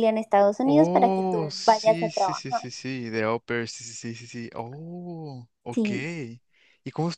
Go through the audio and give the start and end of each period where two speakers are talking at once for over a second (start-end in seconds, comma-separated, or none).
0.7-2.6